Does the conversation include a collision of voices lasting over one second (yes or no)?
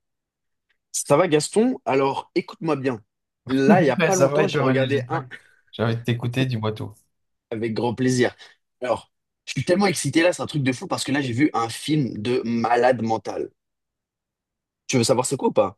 yes